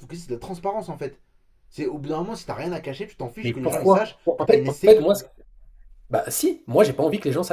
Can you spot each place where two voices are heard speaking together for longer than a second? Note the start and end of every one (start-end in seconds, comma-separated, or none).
3.4-5.0